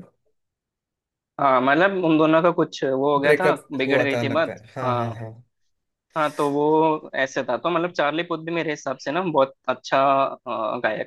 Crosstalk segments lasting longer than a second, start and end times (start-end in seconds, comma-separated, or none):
3.2-5.1